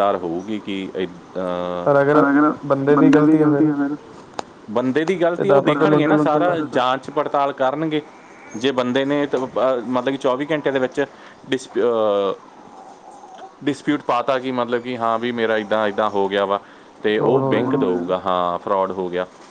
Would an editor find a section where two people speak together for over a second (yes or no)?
yes